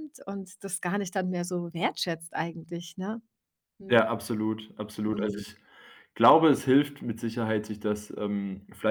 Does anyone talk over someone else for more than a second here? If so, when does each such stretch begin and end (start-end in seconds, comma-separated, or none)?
none